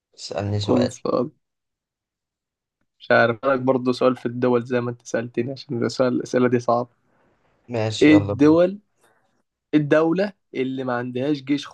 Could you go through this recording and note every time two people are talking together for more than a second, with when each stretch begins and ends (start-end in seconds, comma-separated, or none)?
none